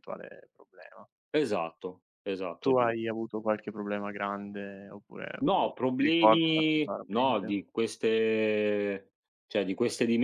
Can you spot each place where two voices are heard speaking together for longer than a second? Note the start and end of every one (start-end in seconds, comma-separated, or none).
5.4-7.5